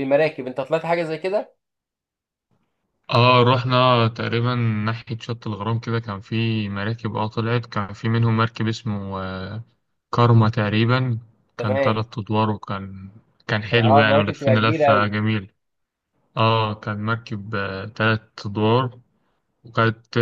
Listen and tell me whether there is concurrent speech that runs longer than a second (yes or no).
yes